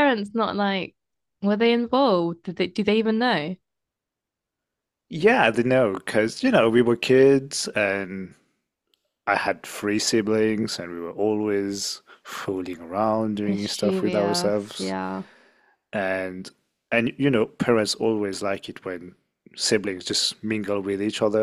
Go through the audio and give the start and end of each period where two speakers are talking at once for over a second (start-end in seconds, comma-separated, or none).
13.5-14.9